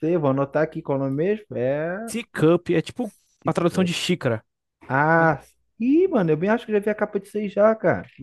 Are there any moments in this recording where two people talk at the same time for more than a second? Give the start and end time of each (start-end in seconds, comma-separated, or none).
none